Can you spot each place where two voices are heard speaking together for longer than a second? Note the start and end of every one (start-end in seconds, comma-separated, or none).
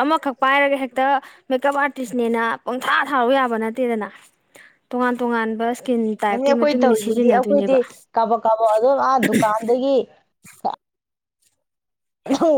6.3-7.8